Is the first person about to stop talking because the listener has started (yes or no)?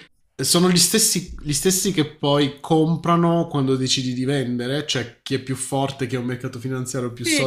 yes